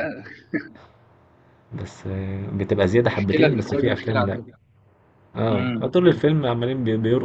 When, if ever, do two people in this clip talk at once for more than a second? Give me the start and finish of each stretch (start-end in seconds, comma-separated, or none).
3.1-4.4